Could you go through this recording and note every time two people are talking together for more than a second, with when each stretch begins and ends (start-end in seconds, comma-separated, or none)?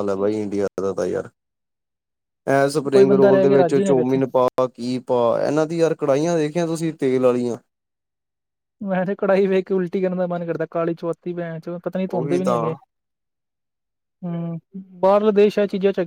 2.9-4.2